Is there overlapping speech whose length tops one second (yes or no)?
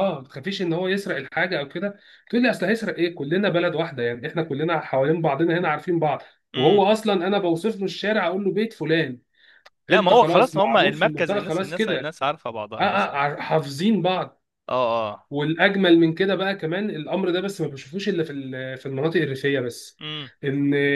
yes